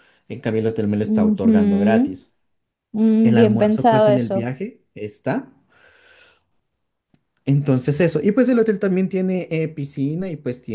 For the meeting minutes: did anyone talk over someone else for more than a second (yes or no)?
yes